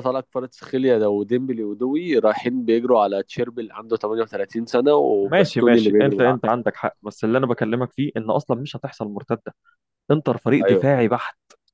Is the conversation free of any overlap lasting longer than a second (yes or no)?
no